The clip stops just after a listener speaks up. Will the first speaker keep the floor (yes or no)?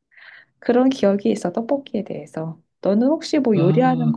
no